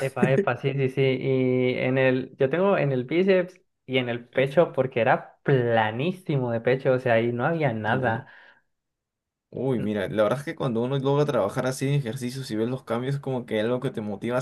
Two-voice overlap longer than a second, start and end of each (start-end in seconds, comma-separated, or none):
none